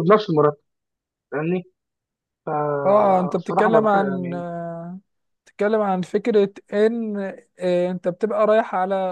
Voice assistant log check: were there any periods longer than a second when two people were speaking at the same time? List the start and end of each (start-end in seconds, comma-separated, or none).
2.9-4.4